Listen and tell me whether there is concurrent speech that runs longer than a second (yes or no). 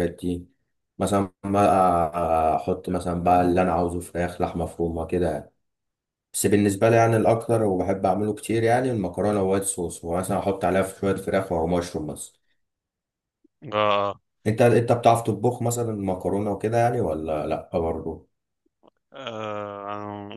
no